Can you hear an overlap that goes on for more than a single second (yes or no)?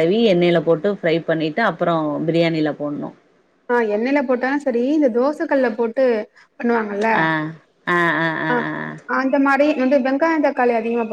no